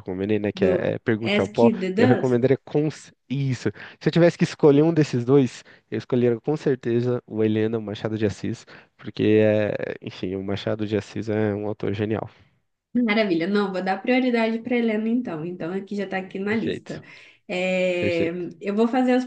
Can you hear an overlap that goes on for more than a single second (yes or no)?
yes